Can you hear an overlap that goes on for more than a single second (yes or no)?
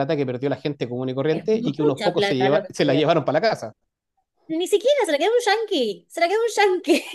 yes